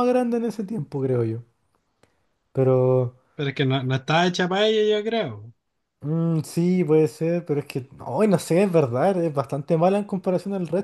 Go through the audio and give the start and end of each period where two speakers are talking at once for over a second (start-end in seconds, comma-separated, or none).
none